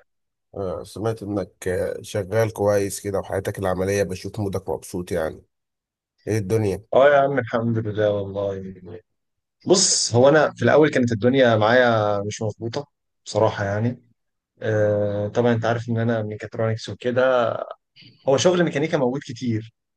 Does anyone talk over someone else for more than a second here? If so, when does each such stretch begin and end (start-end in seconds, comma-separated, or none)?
none